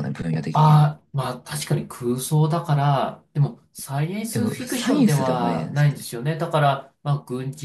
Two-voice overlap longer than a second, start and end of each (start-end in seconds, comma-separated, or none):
4.3-6.1